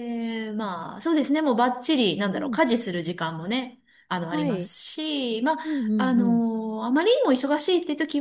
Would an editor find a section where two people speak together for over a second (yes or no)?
no